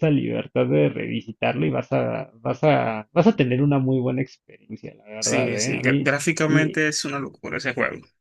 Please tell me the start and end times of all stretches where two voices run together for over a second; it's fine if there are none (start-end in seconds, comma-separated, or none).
5.2-6.8